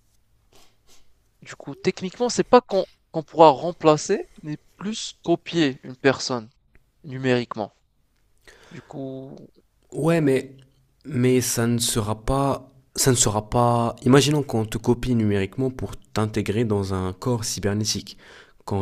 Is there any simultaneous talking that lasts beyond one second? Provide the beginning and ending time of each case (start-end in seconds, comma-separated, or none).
none